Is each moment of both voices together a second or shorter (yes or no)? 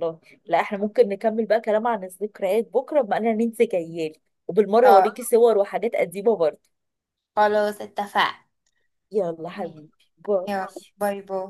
yes